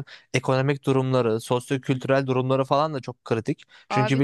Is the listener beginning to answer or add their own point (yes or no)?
yes